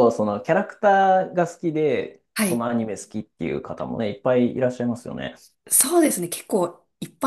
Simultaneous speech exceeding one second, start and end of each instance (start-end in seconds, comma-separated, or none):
none